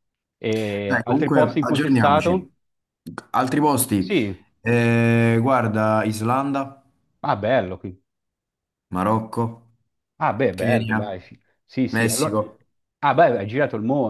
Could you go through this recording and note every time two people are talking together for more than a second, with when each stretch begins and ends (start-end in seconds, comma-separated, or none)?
0.8-2.5